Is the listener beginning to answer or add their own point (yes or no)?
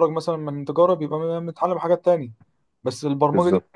no